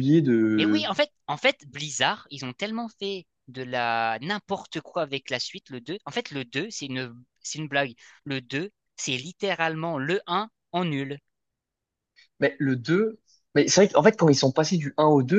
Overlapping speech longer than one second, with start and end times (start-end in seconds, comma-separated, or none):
none